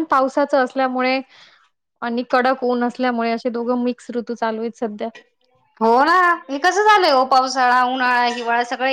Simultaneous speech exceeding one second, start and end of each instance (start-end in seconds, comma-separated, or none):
none